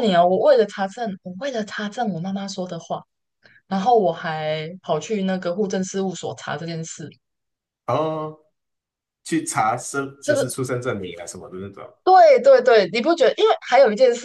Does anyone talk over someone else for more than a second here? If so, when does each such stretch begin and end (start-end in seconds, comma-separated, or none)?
none